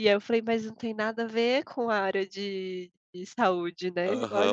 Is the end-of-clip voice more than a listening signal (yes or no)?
yes